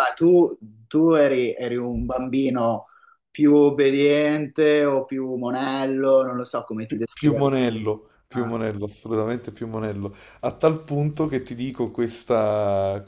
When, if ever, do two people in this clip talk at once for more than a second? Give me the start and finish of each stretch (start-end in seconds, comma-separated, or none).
none